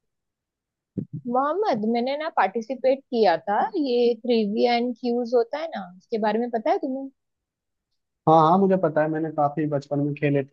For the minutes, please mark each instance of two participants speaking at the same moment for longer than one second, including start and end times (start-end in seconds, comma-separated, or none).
none